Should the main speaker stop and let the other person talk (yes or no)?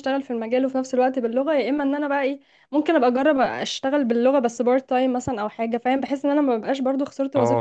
yes